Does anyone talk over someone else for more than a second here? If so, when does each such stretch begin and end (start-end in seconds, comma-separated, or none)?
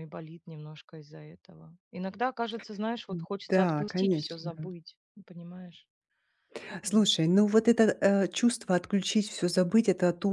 3.5-4.7